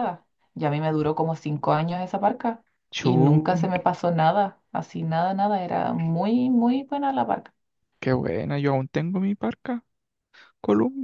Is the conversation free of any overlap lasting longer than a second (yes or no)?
yes